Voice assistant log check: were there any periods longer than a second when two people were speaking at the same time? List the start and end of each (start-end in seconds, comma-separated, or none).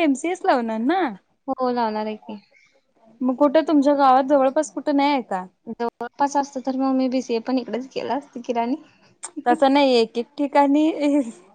none